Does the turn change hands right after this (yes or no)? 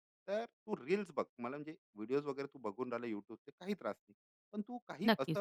no